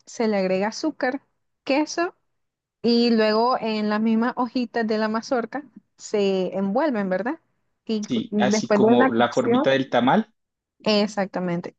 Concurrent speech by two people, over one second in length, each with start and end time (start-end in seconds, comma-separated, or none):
8.1-9.7